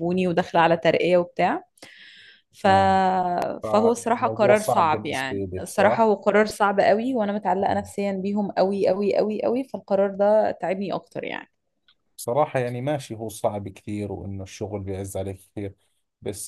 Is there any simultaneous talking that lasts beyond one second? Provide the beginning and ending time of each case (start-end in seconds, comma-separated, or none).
3.6-6.1